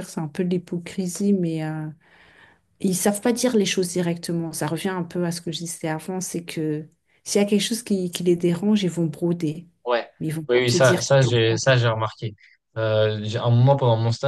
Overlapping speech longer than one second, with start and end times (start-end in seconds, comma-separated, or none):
10.5-11.8